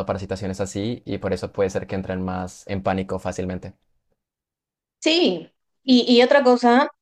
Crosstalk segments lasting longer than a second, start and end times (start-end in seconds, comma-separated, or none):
none